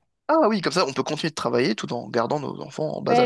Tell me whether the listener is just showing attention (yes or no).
no